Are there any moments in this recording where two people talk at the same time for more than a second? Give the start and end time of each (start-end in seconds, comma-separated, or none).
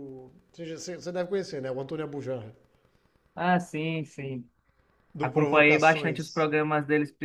5.2-6.5